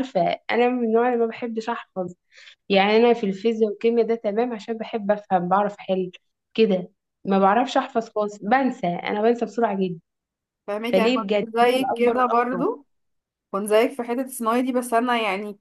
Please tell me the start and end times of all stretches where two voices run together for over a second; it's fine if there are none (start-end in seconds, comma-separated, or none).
10.9-12.5